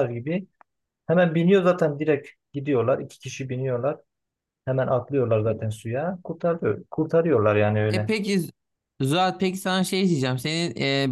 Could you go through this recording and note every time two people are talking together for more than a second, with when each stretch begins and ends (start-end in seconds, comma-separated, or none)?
none